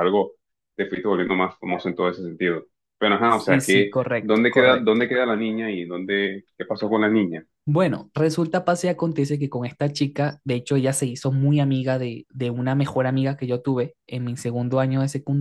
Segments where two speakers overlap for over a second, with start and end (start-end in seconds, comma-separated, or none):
3.3-5.1